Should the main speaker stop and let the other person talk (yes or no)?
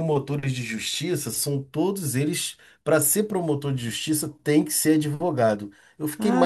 yes